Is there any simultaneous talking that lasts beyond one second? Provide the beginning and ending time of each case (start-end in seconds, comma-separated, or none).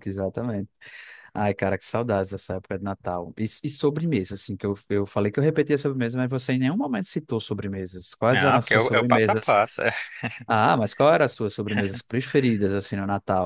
8.3-9.6